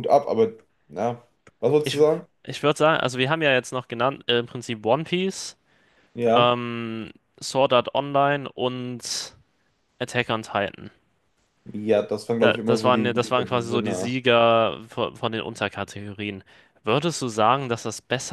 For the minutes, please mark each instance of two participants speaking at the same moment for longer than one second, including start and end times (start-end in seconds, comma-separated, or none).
12.4-14.1